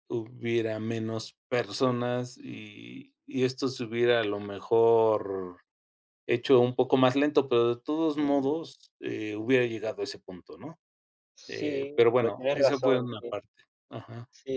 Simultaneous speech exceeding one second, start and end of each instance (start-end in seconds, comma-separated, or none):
11.5-13.3